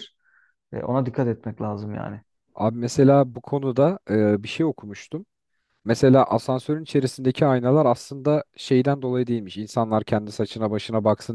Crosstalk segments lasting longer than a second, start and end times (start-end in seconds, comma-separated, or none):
none